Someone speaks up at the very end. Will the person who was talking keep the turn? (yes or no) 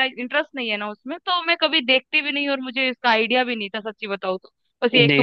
yes